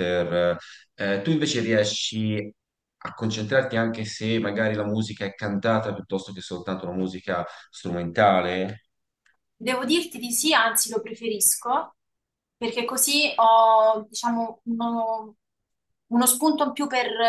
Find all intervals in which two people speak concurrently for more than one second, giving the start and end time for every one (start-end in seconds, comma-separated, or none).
none